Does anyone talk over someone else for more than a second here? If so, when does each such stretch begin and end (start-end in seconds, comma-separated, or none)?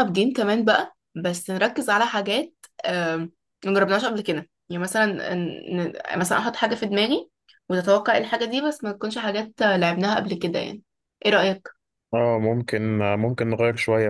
none